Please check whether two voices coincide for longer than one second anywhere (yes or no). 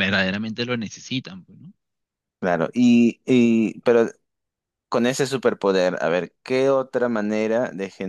no